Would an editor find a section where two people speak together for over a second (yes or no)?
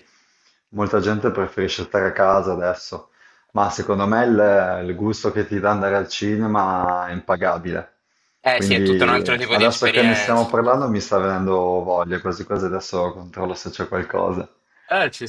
yes